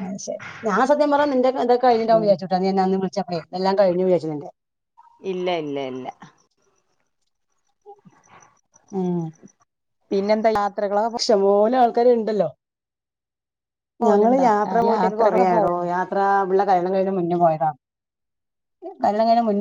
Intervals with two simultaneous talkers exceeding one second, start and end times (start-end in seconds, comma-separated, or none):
14.1-15.9